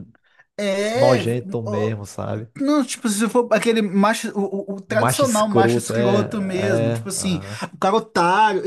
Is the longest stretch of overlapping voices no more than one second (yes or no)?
no